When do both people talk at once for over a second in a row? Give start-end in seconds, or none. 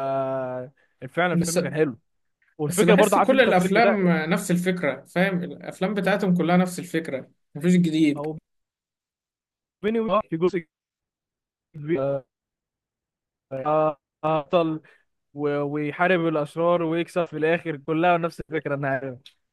2.7-4.1